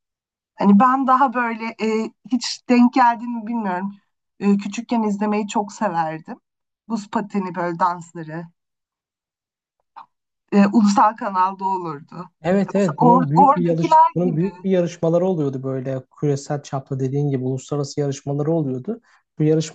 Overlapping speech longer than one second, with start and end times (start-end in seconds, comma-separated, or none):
12.7-14.5